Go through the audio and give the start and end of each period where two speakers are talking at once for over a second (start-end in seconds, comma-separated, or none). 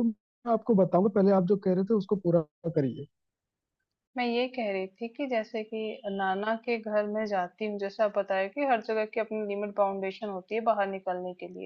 none